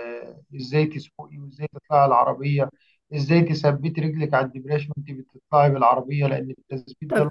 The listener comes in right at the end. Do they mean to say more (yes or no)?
yes